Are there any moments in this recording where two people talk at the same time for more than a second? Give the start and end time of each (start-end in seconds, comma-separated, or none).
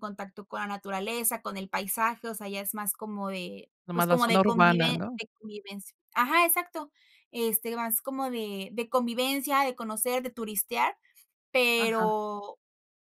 3.9-5.2